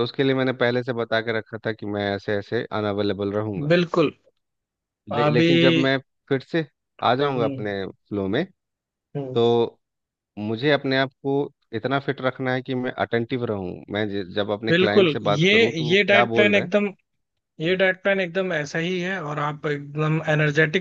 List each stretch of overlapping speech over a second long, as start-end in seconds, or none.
14.7-16.6